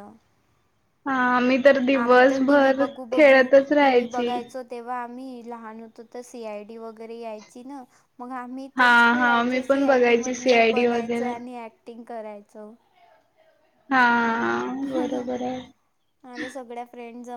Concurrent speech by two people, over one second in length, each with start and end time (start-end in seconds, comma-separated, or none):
1.9-4.3, 8.8-11.3